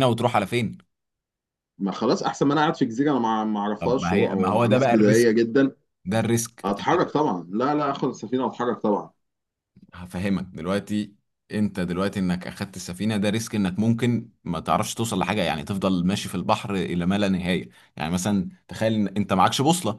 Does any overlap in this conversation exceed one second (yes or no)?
yes